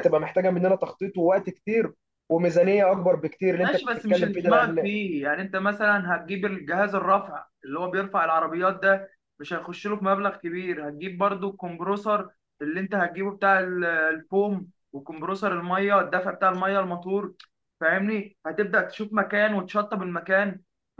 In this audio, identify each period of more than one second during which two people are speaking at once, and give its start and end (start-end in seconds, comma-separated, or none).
3.6-4.9